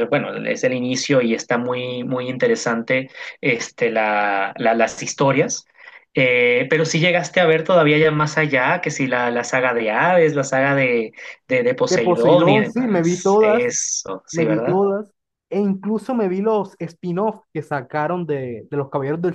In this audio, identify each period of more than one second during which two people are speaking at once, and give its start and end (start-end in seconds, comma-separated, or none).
11.9-13.7